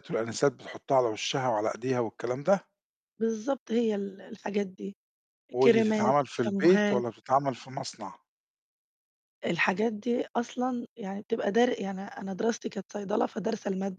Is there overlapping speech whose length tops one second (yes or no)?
yes